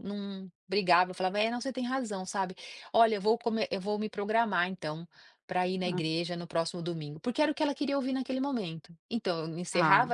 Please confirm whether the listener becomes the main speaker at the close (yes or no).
no